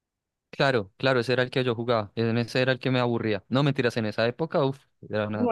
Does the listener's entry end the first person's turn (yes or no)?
yes